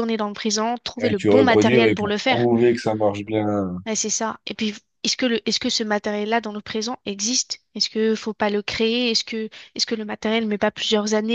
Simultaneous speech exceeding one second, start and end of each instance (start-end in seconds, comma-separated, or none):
1.0-2.5